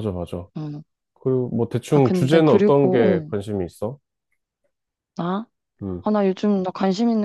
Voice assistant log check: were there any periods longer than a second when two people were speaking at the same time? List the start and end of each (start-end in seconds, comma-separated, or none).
1.9-3.3